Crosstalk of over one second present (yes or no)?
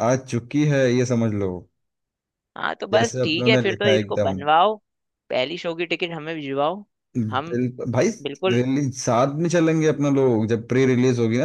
yes